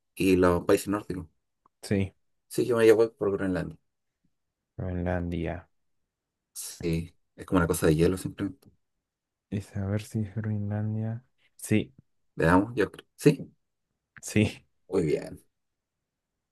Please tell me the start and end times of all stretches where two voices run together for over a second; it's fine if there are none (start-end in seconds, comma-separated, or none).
none